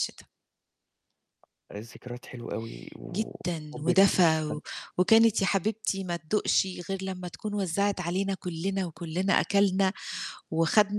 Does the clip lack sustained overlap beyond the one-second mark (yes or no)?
no